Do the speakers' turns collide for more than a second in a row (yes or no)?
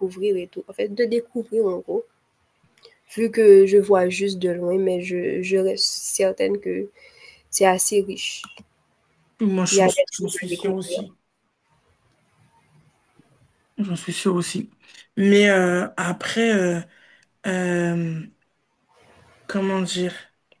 yes